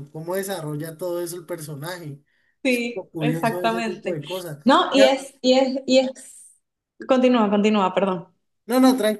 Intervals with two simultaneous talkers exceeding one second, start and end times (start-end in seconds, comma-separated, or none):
2.7-4.2